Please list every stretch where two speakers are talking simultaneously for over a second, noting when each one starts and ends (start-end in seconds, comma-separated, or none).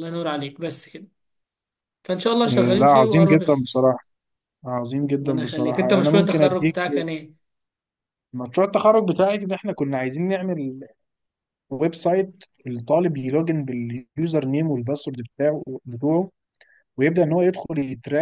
2.5-3.9, 5.2-6.8